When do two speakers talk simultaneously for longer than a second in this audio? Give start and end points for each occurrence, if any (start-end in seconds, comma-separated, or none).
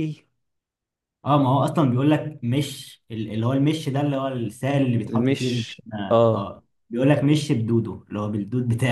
5.1-6.5